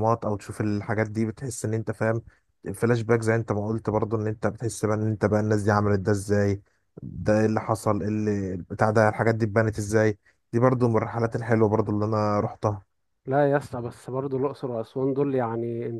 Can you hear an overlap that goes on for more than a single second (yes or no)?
no